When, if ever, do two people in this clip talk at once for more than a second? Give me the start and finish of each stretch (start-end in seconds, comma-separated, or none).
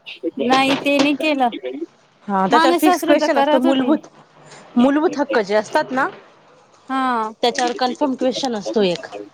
2.5-3.9